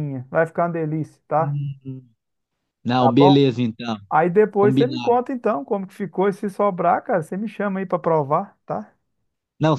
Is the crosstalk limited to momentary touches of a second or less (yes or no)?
yes